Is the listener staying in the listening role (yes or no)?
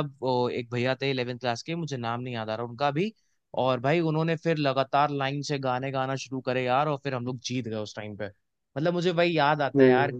yes